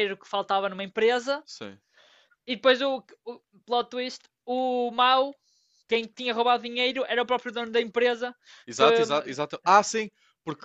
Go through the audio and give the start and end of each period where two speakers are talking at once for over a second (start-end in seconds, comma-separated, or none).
none